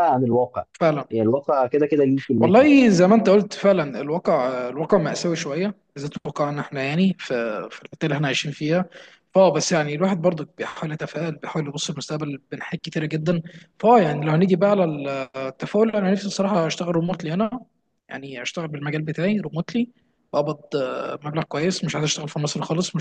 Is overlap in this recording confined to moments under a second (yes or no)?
yes